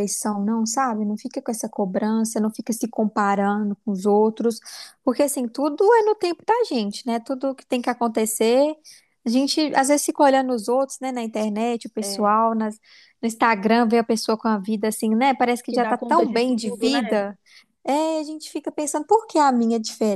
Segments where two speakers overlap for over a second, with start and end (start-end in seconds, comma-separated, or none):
15.7-17.0